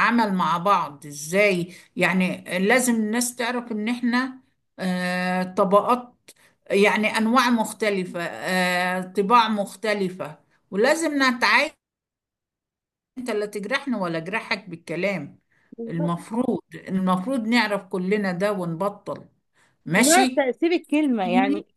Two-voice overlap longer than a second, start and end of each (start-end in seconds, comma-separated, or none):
none